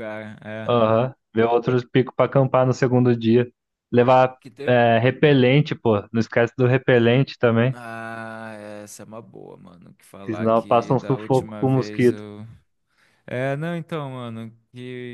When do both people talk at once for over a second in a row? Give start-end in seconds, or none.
10.2-12.2